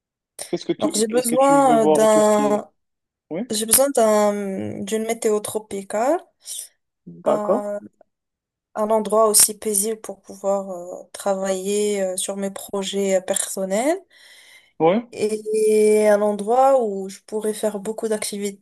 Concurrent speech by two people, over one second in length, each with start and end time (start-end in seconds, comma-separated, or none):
0.8-2.6